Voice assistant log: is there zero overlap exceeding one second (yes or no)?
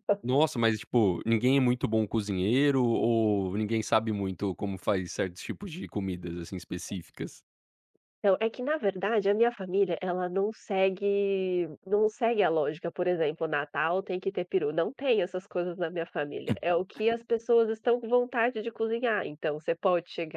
yes